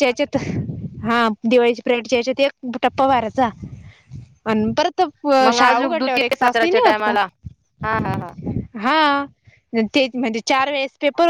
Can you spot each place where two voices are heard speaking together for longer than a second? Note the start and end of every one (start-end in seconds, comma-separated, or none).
5.5-7.2